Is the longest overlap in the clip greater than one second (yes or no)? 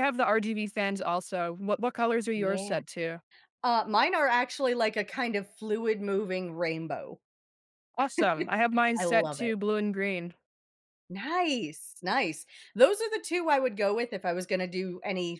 no